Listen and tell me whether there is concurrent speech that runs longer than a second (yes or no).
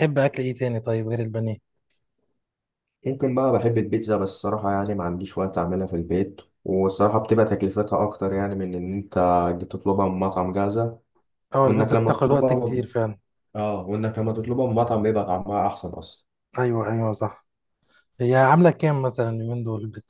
yes